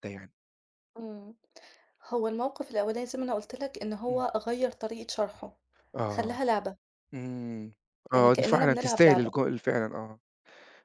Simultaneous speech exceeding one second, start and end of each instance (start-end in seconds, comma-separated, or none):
8.1-9.3